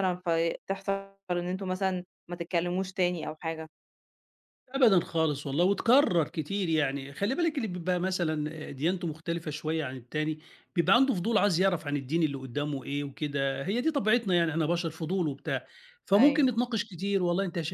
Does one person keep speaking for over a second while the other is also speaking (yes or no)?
no